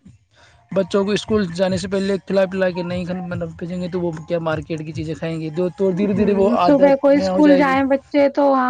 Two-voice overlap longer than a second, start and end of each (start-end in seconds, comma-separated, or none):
5.9-7.7